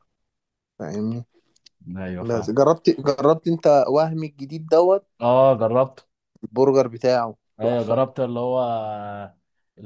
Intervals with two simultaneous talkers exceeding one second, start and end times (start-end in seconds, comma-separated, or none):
none